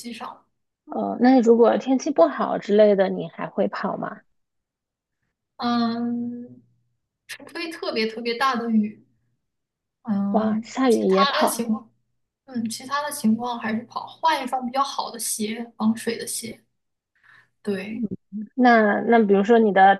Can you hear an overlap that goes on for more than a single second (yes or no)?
yes